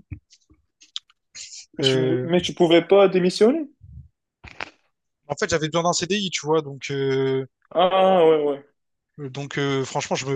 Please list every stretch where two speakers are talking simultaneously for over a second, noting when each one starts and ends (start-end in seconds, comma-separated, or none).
none